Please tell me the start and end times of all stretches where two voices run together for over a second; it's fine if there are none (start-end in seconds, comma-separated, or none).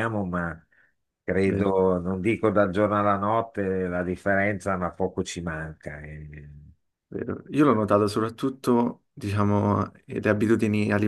none